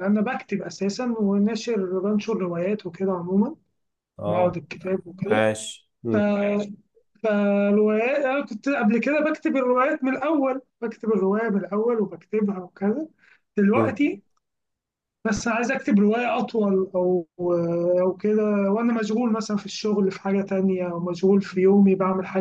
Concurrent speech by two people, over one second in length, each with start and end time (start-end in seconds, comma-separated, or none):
none